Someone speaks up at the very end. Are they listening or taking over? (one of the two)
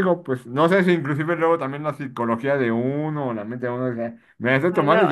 listening